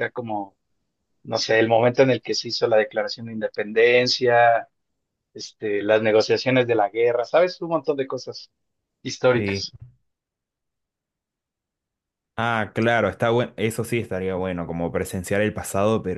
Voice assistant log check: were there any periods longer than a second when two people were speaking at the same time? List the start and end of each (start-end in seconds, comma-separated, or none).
none